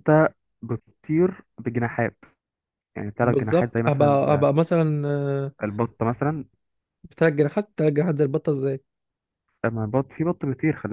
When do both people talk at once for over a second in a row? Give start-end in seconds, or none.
3.2-4.5